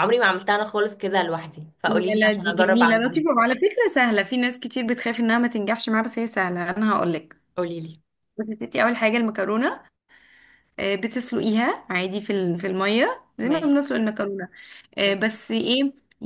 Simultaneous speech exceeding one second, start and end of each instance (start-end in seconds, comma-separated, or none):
1.8-3.2